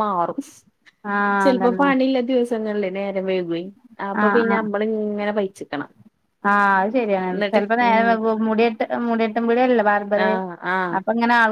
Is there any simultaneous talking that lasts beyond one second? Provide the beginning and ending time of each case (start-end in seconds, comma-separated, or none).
none